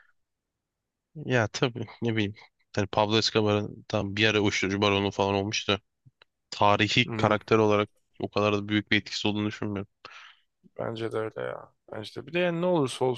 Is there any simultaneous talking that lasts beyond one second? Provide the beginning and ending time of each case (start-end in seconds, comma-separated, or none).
none